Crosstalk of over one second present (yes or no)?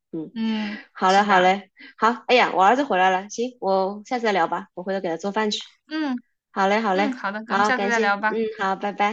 yes